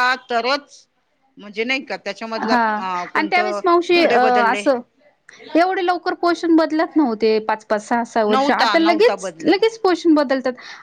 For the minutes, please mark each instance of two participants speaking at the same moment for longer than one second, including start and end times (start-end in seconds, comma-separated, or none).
8.3-9.7